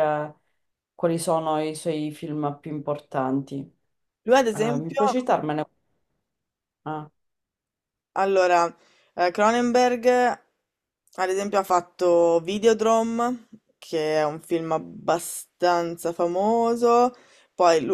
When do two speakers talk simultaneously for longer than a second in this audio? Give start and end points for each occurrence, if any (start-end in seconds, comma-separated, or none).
none